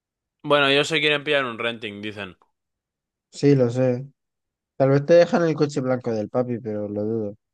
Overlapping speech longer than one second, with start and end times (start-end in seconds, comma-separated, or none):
none